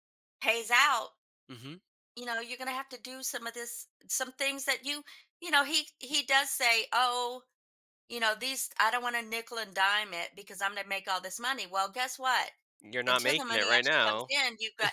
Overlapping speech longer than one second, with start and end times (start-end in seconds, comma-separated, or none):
13.1-14.3